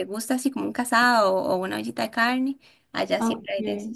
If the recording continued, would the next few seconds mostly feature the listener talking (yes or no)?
yes